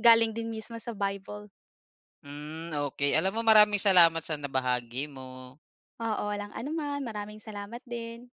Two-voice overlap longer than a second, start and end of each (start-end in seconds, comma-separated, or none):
none